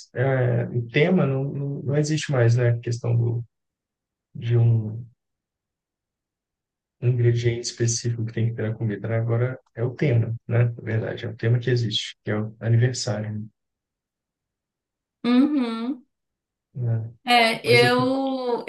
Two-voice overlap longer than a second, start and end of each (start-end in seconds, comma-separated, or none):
none